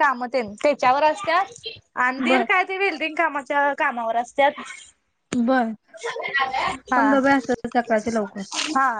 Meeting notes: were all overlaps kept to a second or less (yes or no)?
yes